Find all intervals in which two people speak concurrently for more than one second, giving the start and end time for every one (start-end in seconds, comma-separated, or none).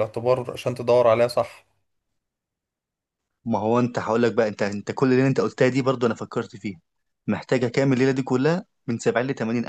none